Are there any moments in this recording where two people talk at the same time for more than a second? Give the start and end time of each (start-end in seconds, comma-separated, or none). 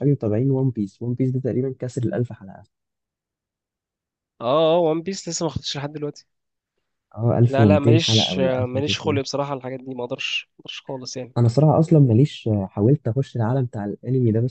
7.5-9.2